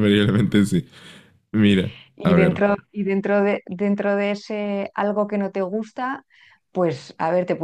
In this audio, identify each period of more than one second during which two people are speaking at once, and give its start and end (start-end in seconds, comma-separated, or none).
none